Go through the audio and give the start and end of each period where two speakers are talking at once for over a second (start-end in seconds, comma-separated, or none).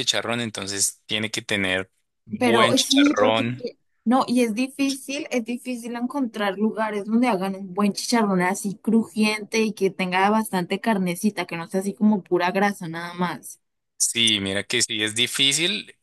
2.4-3.7